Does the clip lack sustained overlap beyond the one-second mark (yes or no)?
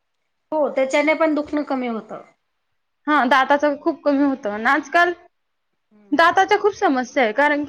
yes